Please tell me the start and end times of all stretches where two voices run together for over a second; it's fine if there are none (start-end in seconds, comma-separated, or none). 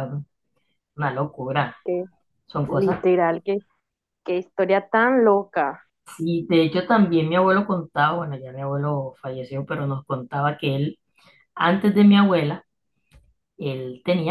none